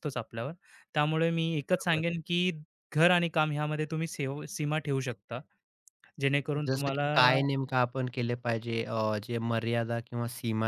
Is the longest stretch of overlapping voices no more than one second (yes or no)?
yes